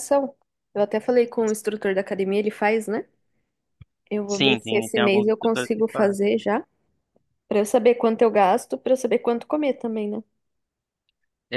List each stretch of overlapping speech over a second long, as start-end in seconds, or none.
4.3-6.2